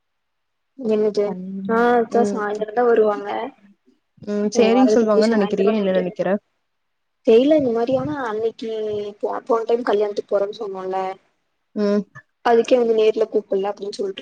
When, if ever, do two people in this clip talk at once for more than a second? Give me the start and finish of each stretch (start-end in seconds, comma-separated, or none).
4.8-6.0